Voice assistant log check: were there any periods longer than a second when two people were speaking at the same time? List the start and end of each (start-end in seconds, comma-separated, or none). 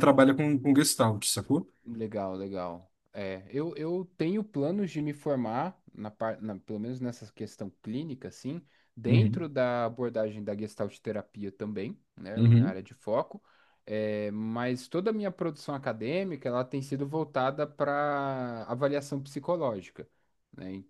none